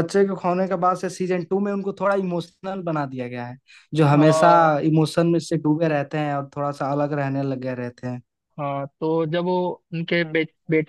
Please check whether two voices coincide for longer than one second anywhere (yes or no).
no